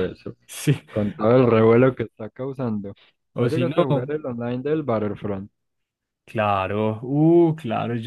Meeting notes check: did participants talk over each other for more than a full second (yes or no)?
no